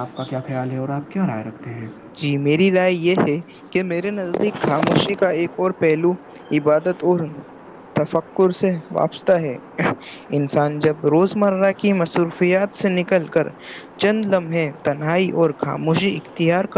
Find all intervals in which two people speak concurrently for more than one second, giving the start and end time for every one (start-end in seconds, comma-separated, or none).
none